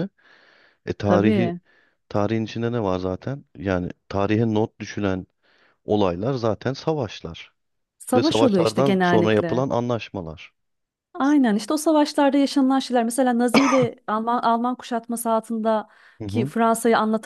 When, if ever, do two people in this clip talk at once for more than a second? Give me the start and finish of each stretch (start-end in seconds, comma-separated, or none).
8.1-9.6